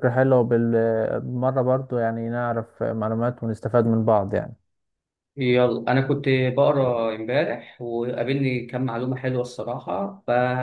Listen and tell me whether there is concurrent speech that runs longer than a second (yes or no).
no